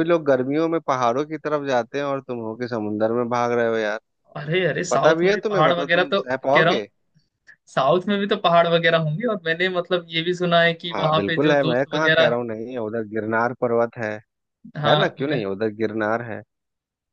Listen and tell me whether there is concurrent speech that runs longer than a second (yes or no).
yes